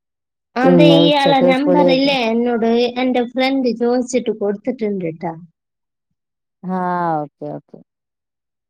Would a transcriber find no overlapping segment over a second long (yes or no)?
no